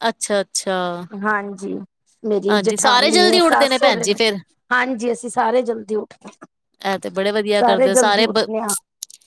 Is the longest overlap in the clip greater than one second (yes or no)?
yes